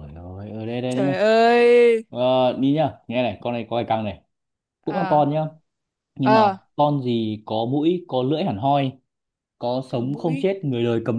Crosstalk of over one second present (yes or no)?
no